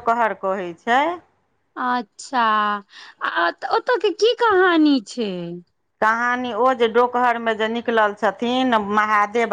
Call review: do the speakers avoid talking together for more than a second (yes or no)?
yes